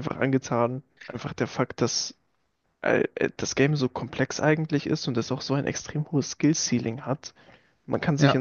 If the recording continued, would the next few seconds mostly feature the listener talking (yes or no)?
no